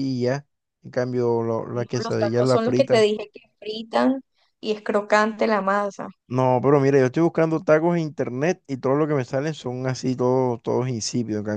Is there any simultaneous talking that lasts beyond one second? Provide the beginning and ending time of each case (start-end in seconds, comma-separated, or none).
1.7-3.1